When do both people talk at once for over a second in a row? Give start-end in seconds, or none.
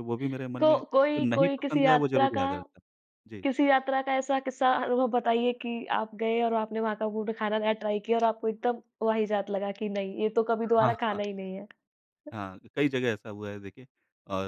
0.6-2.4